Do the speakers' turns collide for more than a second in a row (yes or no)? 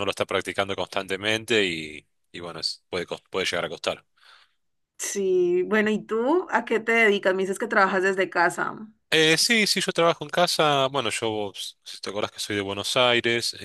no